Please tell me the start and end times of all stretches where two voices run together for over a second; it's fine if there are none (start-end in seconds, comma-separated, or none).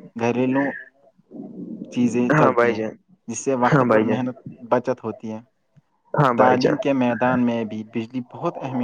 none